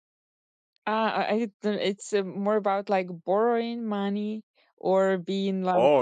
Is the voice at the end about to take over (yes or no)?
yes